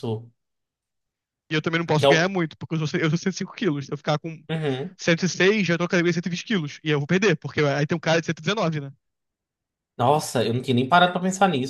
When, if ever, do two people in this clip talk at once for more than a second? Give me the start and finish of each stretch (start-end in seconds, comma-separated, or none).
none